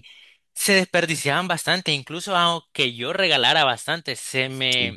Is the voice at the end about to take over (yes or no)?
no